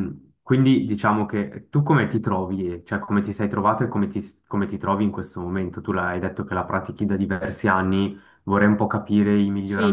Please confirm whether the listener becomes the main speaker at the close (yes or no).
yes